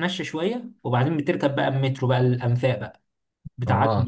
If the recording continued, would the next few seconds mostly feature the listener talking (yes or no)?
yes